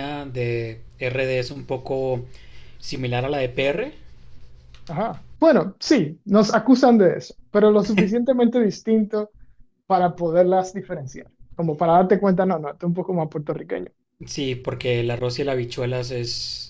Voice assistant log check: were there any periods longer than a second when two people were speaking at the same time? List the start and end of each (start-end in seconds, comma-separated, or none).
none